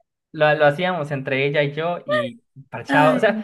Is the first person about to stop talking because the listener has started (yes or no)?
no